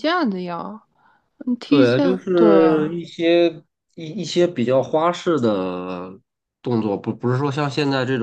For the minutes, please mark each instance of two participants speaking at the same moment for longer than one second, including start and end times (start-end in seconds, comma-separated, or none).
1.7-3.0